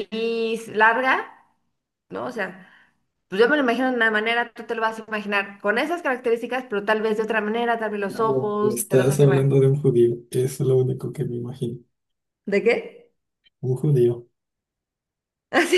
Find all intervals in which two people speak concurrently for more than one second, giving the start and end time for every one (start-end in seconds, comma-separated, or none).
8.1-9.6